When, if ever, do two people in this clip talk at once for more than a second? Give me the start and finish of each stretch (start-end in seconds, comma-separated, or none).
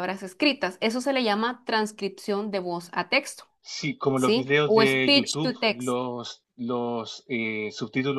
4.2-6.0